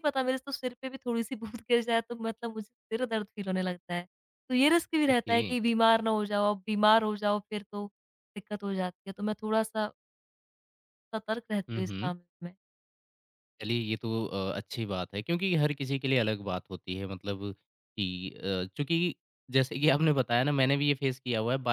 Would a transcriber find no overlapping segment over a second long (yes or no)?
yes